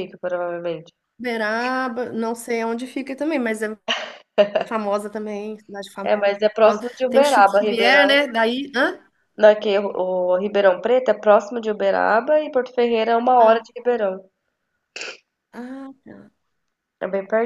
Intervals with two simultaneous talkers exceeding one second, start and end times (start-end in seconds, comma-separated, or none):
6.1-8.1